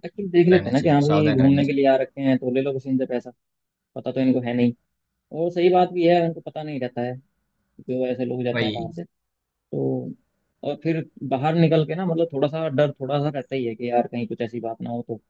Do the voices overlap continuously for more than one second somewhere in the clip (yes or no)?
yes